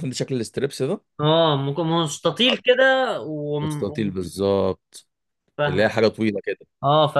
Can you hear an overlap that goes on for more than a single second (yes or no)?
no